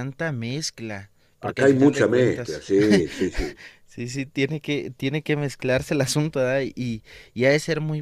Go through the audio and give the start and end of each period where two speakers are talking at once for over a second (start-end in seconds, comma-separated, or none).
1.4-2.6